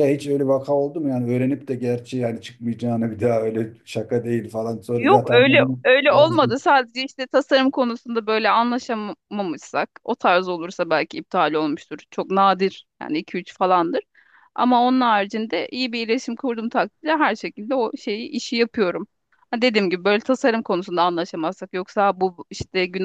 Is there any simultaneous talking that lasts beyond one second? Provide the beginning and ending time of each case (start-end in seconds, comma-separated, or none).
5.0-6.7